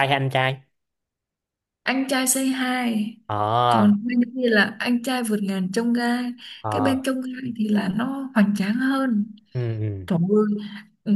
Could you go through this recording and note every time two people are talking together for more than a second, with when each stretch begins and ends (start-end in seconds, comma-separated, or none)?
none